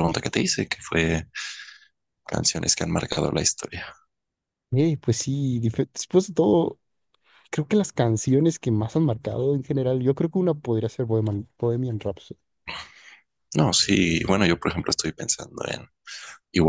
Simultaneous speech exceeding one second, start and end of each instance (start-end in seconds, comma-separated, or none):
none